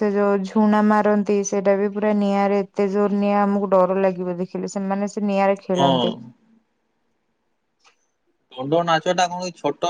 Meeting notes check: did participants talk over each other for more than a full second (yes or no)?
no